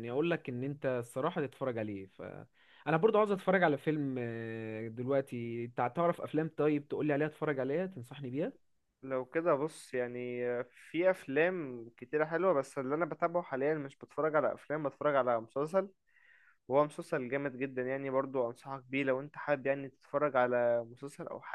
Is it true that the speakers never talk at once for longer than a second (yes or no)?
yes